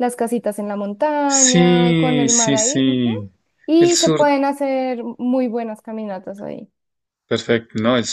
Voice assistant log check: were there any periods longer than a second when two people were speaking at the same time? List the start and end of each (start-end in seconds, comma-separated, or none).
1.2-3.1